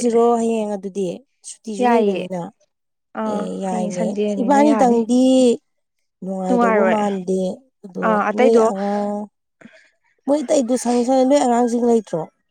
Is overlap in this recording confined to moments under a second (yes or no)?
no